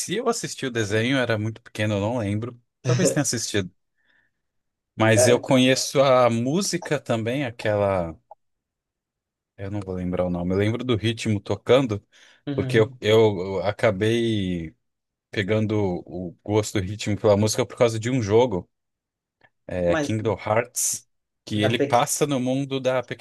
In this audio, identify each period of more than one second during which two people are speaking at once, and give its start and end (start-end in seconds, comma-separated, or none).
none